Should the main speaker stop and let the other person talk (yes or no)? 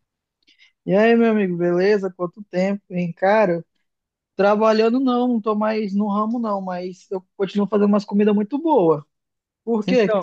yes